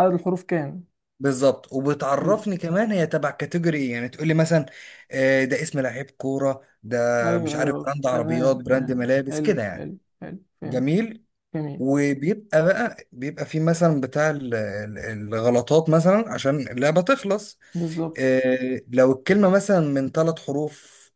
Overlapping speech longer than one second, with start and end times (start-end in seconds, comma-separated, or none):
7.4-9.9